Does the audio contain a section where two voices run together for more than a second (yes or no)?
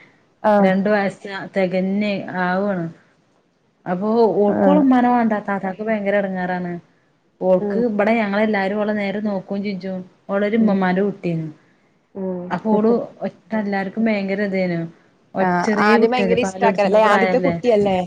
yes